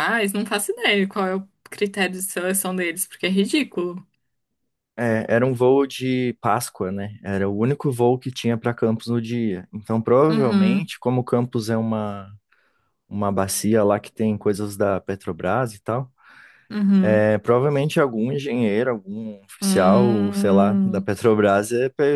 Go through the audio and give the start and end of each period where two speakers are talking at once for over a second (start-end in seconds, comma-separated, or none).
19.6-21.1